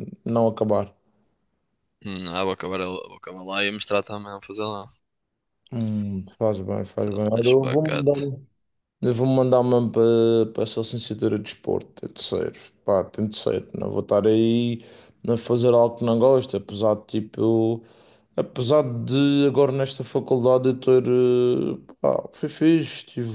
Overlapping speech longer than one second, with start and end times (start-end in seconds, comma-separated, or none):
7.0-8.3